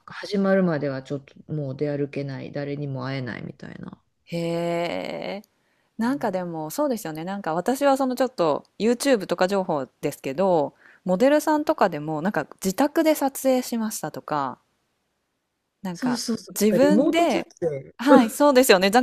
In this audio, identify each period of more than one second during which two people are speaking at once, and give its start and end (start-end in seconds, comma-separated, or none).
15.9-17.5